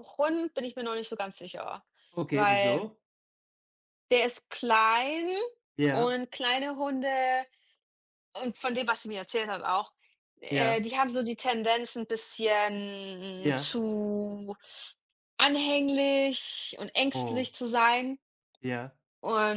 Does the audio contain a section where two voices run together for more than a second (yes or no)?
no